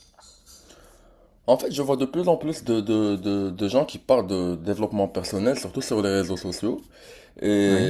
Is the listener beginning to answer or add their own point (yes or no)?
no